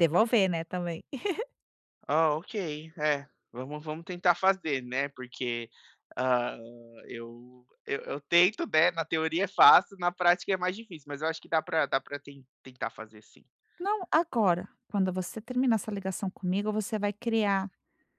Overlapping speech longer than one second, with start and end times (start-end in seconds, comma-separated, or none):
none